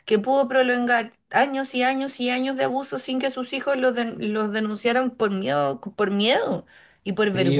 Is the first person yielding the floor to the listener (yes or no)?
yes